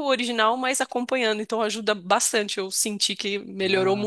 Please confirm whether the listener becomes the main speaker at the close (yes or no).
yes